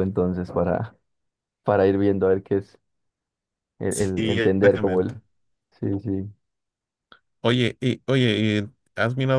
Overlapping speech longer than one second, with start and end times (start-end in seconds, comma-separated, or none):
3.9-5.2